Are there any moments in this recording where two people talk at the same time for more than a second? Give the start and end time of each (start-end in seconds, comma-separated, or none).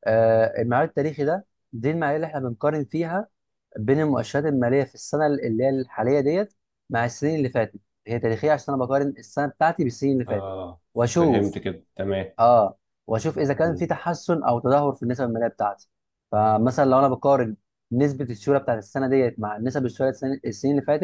none